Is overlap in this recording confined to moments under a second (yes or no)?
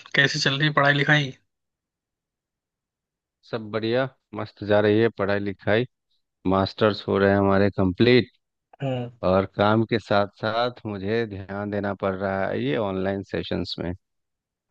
yes